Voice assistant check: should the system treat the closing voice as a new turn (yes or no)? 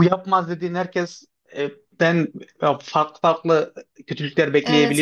yes